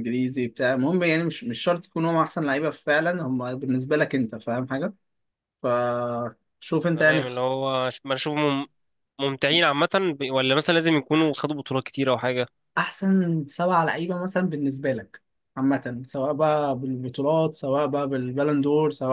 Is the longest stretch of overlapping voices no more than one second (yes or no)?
yes